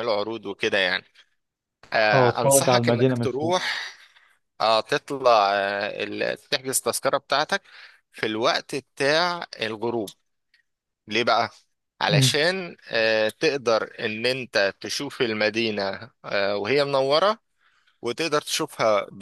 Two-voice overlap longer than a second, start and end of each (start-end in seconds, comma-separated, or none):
2.1-3.6